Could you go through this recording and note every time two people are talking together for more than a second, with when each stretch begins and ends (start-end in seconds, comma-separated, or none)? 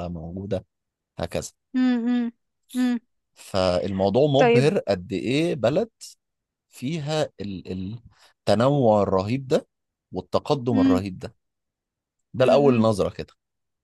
none